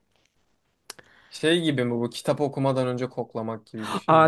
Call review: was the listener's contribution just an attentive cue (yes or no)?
no